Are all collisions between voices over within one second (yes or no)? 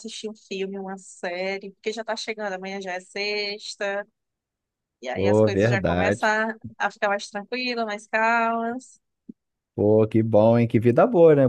no